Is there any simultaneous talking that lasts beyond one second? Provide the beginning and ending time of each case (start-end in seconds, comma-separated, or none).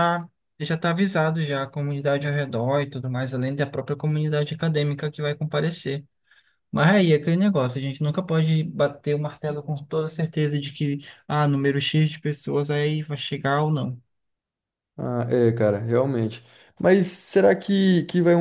none